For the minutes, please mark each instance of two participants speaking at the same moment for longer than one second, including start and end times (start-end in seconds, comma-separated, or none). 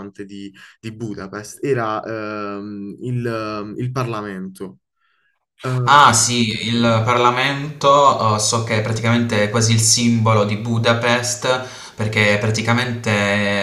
none